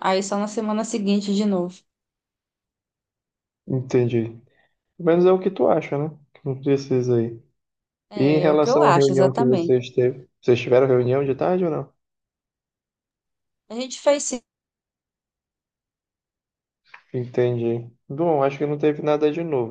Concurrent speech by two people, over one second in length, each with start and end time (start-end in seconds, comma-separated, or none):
8.2-9.7